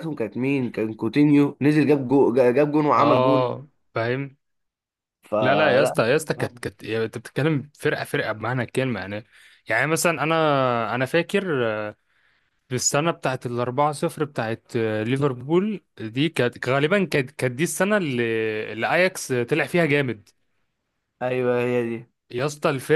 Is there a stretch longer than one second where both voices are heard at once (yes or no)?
no